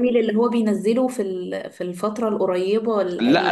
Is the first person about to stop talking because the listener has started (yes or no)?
yes